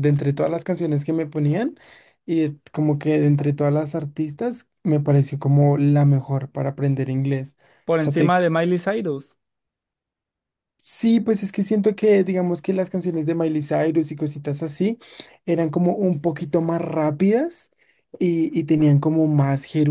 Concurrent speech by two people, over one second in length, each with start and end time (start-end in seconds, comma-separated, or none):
none